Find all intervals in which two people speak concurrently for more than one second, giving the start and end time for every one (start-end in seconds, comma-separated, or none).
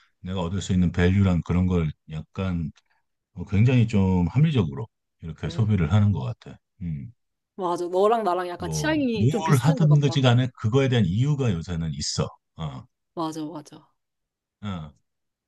8.6-10.2